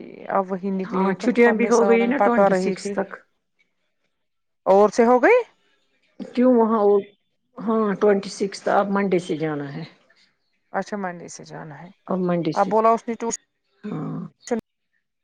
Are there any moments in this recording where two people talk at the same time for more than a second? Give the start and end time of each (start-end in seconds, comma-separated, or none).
0.9-2.9